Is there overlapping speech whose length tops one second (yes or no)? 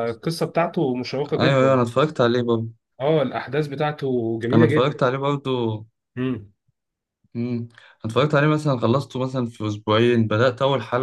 no